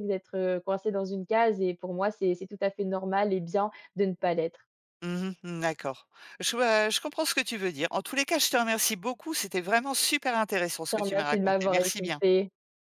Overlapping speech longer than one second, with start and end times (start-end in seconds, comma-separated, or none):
10.8-12.2